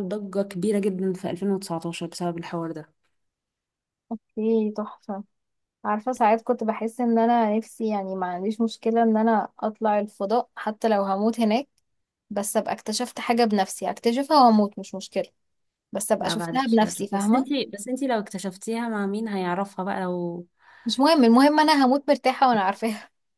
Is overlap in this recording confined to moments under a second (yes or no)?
no